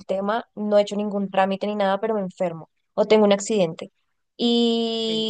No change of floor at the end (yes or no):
yes